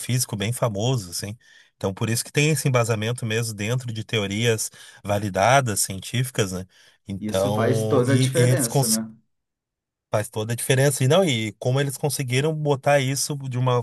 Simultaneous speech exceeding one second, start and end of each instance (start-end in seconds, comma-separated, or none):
7.2-9.0